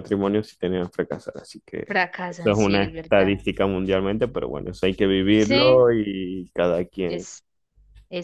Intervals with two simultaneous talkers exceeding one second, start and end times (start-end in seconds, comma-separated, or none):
1.9-3.4